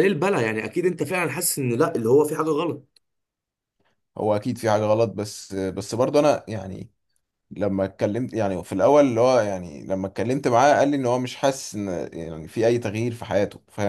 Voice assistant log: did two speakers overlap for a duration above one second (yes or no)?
no